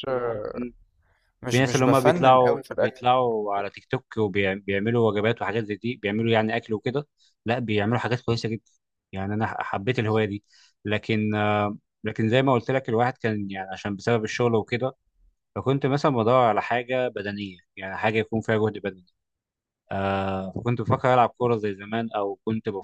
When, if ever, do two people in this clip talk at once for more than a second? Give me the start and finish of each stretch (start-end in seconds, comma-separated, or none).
1.5-3.0